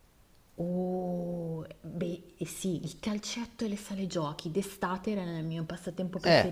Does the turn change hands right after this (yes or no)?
yes